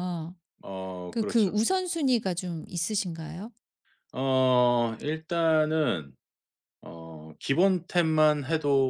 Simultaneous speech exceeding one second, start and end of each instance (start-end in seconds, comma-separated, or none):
none